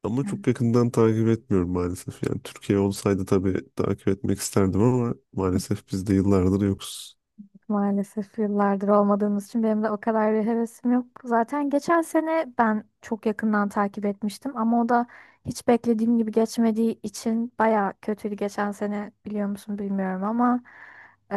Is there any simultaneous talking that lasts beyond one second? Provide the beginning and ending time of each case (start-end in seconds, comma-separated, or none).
none